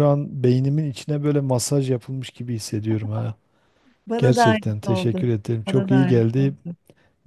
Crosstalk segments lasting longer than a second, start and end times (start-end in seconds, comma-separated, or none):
4.2-6.5